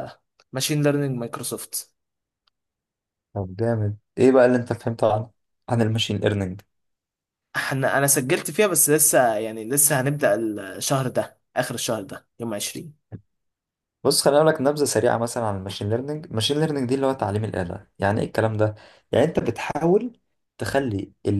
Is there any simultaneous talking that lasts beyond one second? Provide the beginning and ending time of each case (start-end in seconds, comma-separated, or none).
none